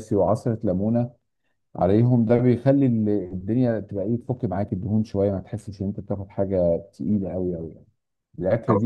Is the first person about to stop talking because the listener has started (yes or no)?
no